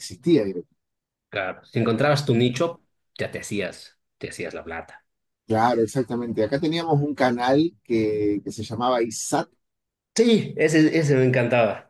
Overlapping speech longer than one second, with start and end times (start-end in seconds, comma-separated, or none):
none